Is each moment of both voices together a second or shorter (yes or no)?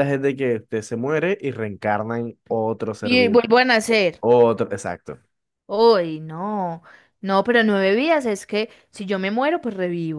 yes